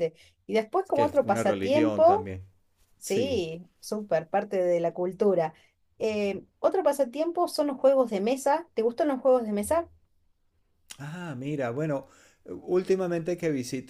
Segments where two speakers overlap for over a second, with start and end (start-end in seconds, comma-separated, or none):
0.8-2.3